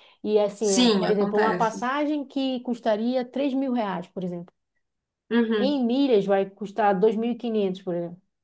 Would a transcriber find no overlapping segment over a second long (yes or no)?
no